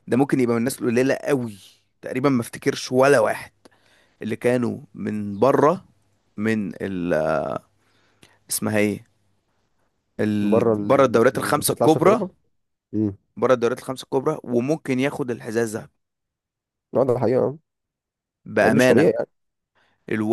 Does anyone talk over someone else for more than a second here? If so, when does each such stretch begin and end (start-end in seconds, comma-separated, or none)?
10.4-12.2